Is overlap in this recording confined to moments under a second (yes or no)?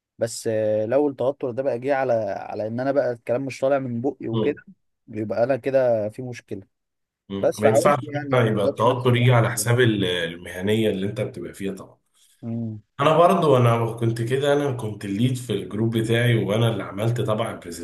no